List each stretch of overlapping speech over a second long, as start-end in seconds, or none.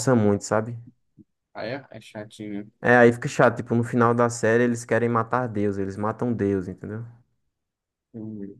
none